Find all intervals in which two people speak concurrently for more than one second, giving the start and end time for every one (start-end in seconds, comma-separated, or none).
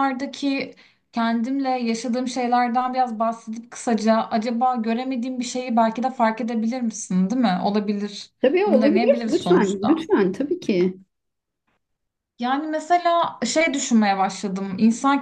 8.4-10.1